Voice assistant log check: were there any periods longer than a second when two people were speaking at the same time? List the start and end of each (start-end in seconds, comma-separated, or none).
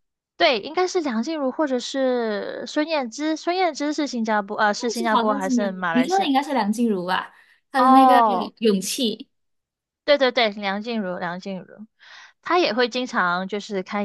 4.9-6.3